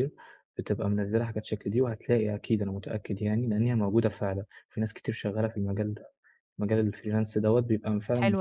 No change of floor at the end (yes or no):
yes